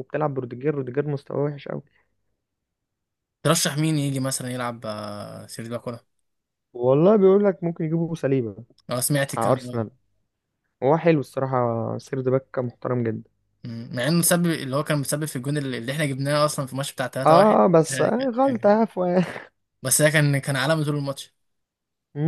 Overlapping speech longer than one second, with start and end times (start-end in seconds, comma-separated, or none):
17.2-18.9